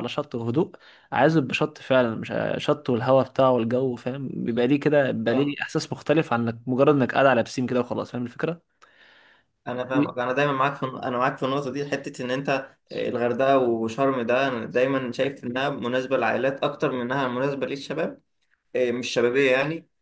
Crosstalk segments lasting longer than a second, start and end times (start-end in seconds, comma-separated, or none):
none